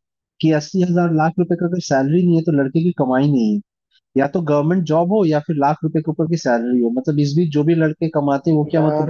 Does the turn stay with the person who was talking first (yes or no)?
no